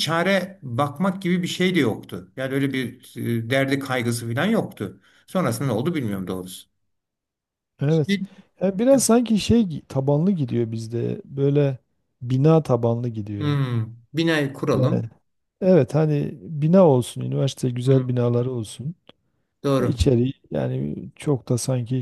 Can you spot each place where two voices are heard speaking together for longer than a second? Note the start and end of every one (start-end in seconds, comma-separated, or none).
none